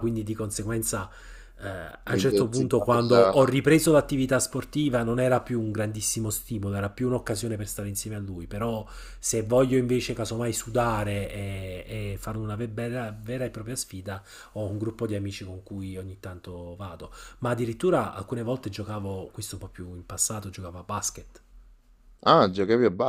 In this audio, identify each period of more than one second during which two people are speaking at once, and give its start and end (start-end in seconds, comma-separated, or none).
2.1-3.5